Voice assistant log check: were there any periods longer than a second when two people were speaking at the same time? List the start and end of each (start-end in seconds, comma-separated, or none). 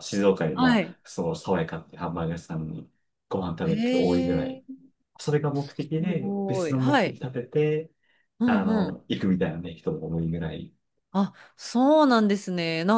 5.8-7.2